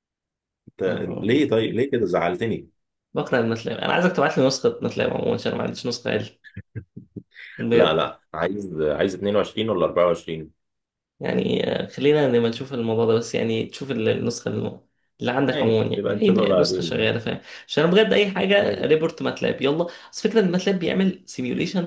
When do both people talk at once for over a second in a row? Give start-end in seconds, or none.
15.5-17.1